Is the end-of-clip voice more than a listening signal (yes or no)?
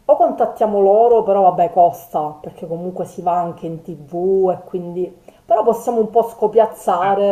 no